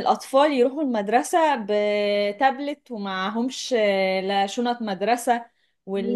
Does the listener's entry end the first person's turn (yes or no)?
no